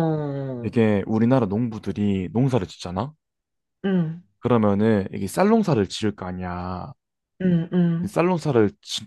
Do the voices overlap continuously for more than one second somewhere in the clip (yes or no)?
no